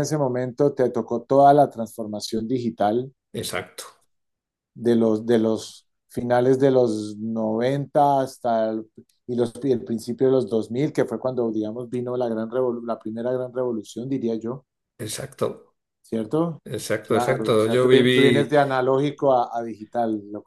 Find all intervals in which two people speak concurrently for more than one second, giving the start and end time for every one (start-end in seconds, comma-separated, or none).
17.0-18.5